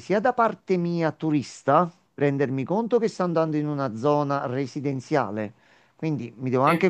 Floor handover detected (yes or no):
no